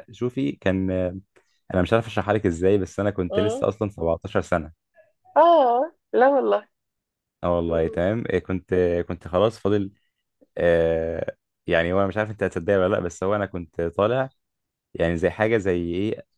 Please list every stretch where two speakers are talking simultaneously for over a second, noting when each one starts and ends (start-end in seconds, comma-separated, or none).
none